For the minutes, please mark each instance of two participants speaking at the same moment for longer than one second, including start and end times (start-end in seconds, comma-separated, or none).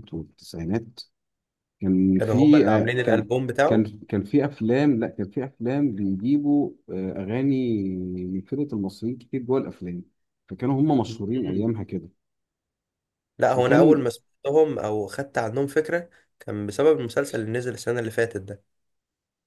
2.1-3.9